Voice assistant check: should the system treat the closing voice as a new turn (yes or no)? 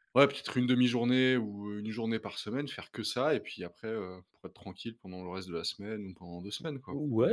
yes